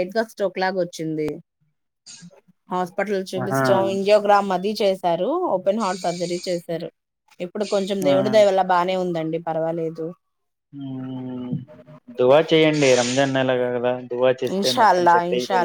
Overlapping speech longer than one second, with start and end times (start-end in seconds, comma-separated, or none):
none